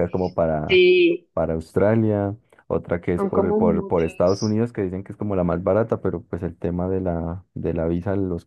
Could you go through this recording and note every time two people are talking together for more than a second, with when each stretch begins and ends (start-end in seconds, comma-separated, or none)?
3.1-4.6